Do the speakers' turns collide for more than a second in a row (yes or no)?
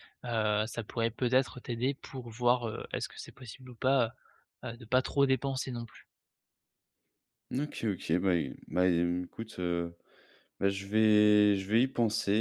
no